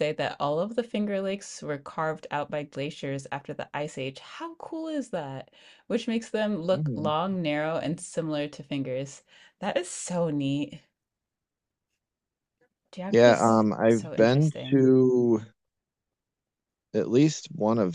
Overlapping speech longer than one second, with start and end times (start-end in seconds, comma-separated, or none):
13.1-14.9